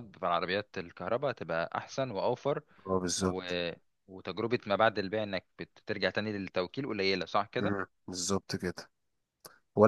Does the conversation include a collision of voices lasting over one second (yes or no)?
no